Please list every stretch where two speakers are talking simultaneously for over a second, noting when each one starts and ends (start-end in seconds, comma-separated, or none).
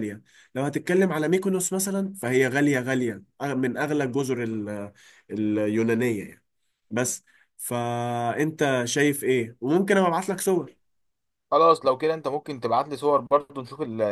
none